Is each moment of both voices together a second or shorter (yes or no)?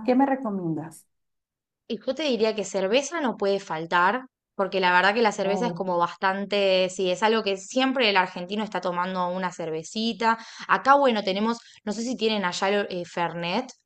yes